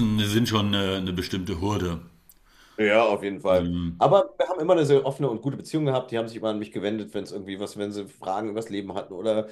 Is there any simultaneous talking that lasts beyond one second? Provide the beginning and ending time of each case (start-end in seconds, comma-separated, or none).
none